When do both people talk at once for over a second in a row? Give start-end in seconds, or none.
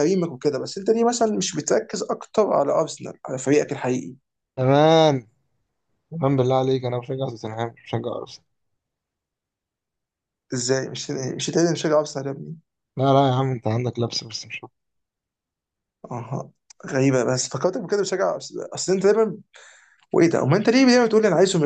none